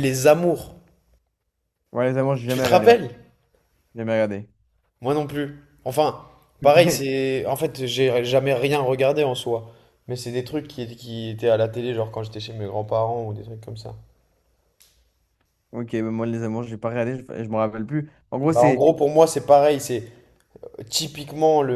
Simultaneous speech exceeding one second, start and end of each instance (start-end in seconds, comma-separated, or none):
none